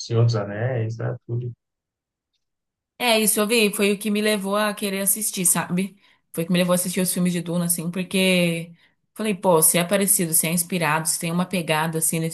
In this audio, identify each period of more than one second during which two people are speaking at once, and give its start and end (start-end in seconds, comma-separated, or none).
none